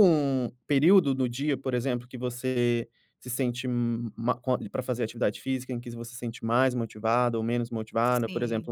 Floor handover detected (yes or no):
no